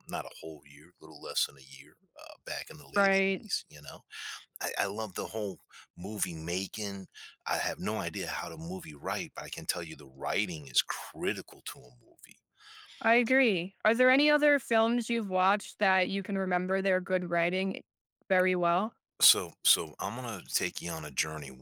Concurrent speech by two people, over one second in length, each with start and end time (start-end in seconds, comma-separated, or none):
none